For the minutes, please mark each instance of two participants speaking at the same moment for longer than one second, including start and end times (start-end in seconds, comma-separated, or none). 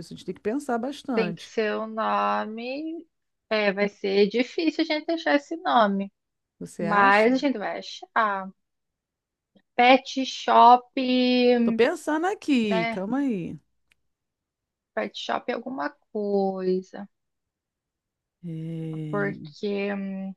none